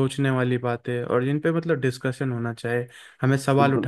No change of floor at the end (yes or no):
yes